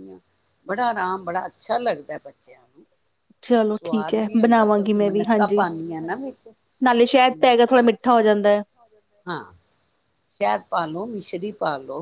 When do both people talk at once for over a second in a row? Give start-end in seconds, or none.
3.7-5.7